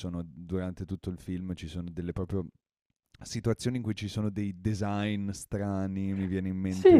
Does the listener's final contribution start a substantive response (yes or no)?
yes